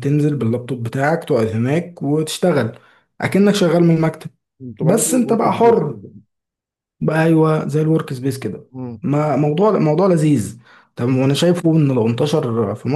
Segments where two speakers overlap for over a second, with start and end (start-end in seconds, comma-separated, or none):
4.8-6.0